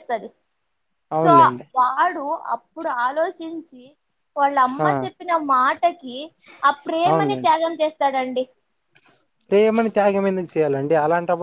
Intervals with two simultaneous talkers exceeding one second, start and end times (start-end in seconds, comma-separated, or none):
none